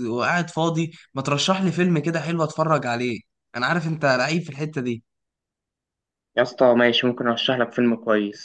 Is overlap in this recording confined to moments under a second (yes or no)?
yes